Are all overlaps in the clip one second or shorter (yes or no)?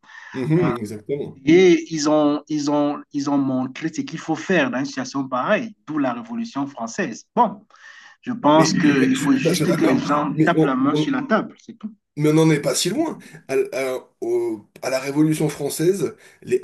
no